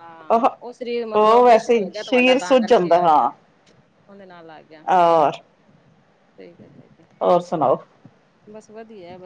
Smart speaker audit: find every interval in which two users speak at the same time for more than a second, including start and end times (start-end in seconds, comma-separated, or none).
1.2-3.3